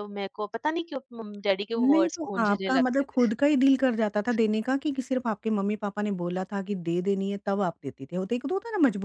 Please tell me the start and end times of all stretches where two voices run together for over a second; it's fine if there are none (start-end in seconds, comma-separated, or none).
1.8-3.3